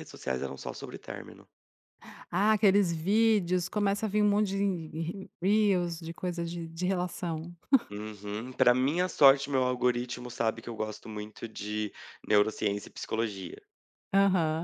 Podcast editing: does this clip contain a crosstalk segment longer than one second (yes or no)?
no